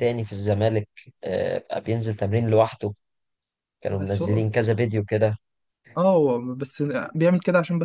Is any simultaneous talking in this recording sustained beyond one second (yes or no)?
no